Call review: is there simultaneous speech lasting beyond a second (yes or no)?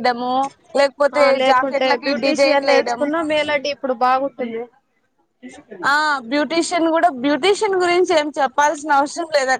yes